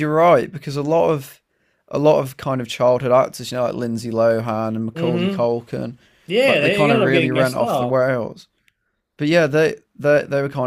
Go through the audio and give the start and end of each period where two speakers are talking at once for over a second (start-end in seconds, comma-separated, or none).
6.4-8.0